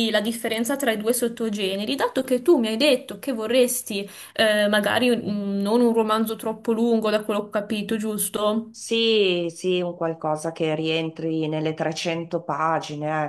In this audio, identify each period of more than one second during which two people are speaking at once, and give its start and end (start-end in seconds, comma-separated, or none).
none